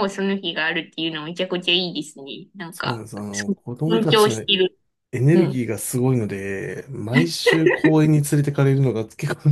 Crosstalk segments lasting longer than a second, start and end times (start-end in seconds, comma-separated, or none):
2.7-4.4